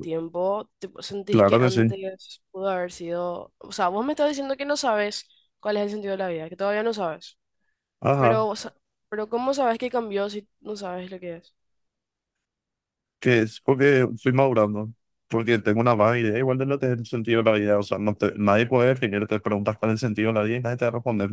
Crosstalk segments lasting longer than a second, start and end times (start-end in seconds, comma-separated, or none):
none